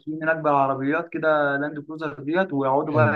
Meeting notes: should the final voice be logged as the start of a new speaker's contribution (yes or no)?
no